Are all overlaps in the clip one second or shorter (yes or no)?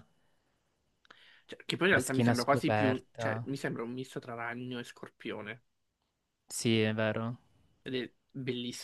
no